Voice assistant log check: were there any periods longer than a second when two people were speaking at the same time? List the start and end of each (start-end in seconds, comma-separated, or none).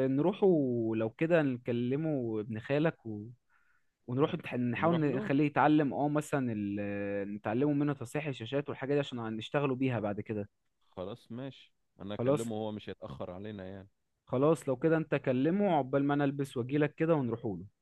none